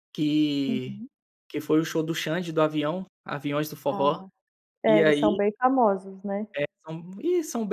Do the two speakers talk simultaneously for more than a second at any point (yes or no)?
no